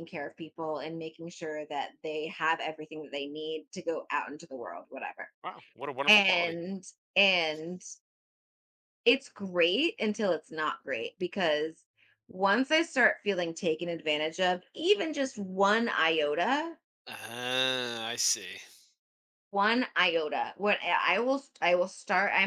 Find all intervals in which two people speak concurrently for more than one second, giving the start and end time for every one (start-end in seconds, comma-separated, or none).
none